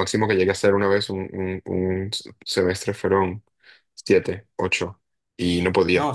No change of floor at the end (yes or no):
no